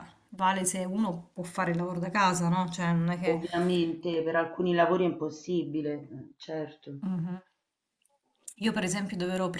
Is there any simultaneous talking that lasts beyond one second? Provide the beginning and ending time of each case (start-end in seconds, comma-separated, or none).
none